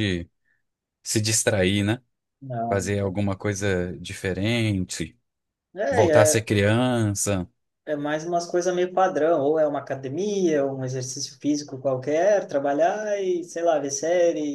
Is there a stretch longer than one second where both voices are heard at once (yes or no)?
no